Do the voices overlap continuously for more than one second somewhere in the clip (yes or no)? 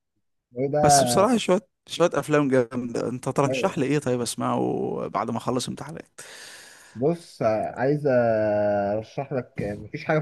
no